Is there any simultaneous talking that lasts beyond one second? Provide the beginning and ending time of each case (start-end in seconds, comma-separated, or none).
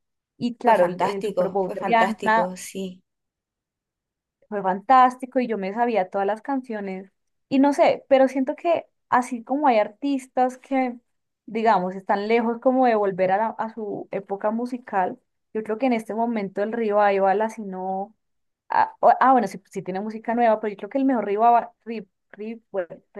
0.6-2.5